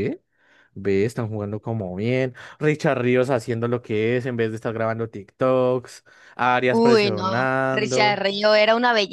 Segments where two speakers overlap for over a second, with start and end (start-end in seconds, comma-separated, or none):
6.7-8.2